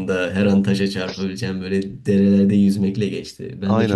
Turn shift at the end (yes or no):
no